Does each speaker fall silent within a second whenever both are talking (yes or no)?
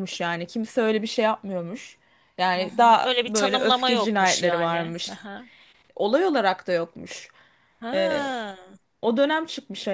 no